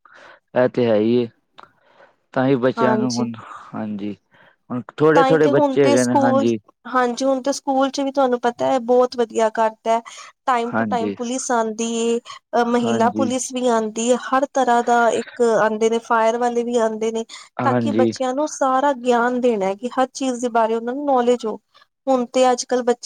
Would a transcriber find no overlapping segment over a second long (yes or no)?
no